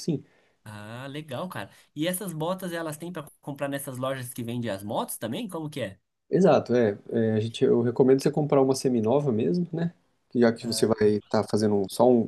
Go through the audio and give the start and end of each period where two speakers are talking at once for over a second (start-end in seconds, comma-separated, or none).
none